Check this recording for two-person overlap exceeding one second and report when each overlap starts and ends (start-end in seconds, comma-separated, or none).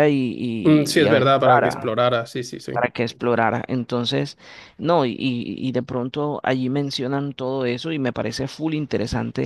0.6-1.9